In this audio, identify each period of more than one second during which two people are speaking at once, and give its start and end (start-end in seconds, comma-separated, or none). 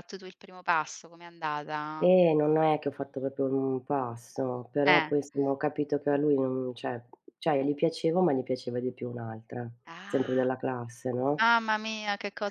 none